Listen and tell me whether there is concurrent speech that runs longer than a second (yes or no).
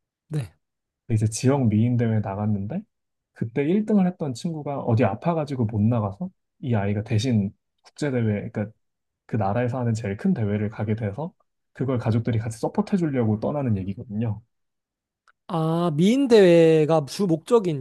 no